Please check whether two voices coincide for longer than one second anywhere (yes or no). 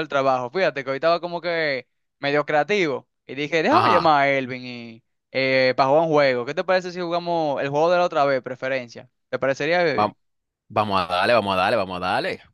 no